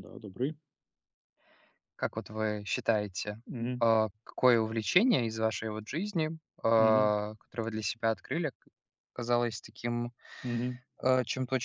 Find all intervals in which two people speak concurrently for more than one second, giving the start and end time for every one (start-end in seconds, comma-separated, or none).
none